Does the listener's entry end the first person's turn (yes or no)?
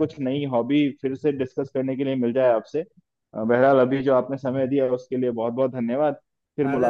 yes